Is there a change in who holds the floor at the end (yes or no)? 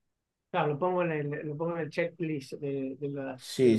yes